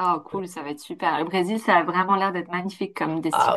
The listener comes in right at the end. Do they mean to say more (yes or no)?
yes